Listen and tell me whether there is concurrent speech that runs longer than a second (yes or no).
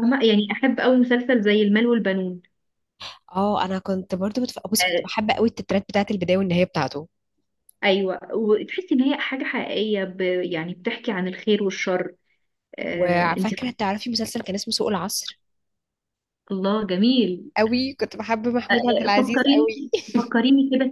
yes